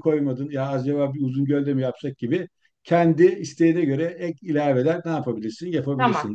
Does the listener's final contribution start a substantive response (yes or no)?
yes